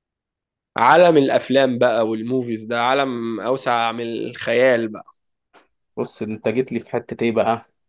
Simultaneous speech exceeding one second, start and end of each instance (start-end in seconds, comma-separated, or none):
none